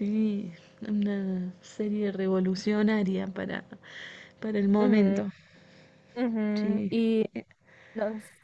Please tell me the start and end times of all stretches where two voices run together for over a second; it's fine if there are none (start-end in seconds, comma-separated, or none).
none